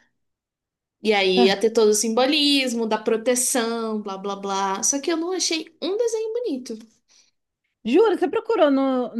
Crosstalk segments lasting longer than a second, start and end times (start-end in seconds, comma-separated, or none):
none